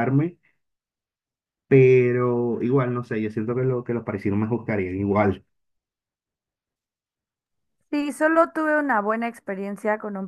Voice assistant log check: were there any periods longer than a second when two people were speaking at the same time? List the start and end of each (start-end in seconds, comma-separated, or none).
none